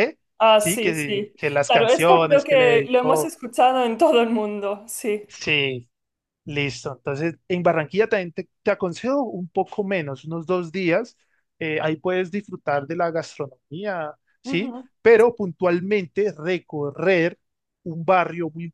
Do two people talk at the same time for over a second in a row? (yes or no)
yes